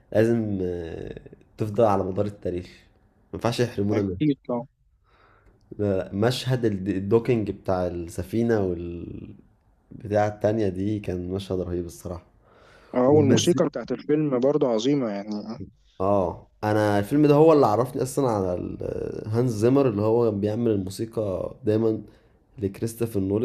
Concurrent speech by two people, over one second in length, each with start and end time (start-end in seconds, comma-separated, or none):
none